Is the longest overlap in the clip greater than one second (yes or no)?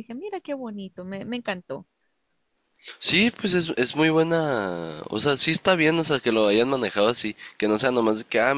no